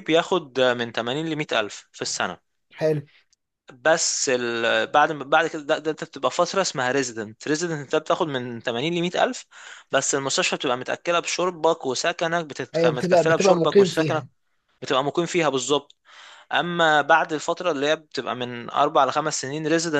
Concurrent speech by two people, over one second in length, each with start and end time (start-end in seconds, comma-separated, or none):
12.7-14.2